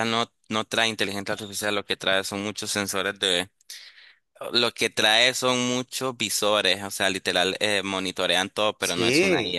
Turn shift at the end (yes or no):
yes